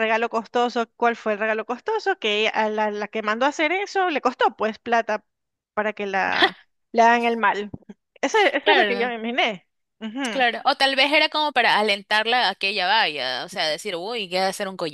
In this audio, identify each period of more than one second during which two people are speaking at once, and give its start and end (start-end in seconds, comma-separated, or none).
none